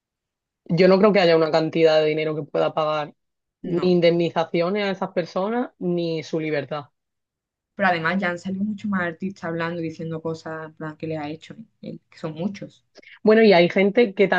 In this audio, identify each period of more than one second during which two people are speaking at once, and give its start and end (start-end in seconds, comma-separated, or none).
none